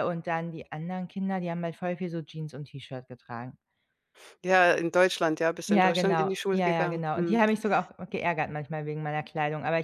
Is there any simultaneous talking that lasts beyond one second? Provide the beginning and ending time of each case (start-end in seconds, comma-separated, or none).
5.7-7.4